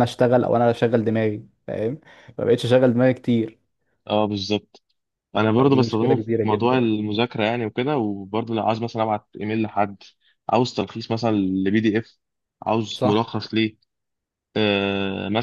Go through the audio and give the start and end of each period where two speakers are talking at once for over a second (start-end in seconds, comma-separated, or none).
5.6-6.8